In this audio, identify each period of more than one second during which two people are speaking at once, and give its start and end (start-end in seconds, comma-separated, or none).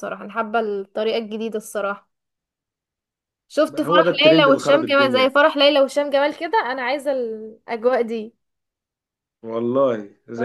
3.7-5.4